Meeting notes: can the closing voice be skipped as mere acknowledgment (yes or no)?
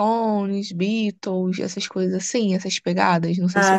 no